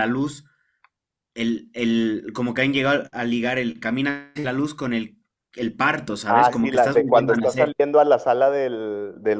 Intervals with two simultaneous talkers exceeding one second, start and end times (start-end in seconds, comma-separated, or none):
6.3-7.7